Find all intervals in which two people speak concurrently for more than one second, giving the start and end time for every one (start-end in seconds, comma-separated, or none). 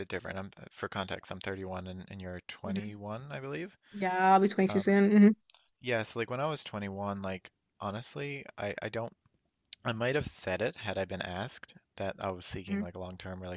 none